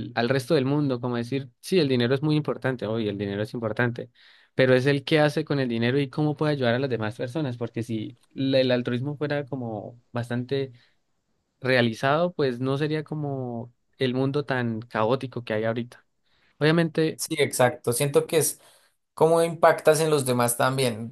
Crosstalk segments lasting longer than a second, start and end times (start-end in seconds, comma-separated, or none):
none